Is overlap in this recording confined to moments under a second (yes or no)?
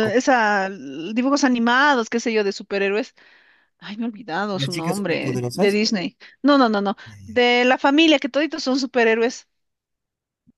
no